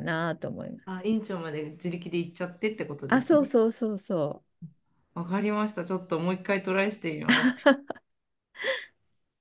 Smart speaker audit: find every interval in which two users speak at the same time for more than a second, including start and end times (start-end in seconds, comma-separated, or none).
none